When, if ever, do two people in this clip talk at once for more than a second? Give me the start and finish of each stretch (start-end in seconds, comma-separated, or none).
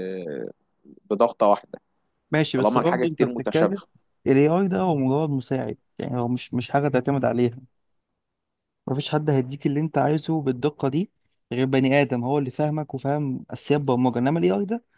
2.6-3.8